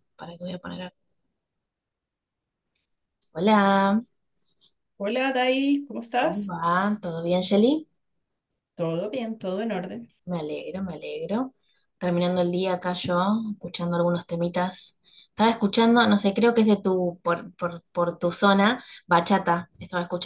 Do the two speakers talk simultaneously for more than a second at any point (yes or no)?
no